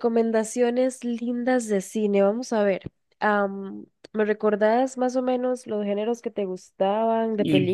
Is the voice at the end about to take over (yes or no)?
yes